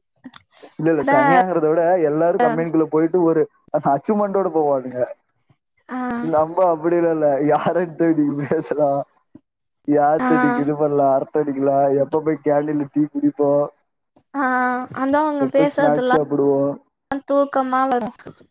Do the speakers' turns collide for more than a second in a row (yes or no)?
no